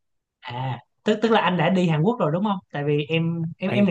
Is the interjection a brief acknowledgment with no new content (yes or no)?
yes